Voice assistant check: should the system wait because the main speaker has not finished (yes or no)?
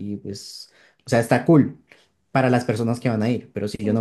no